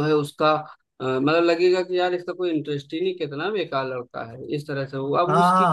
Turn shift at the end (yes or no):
yes